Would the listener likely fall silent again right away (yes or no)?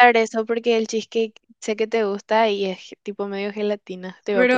no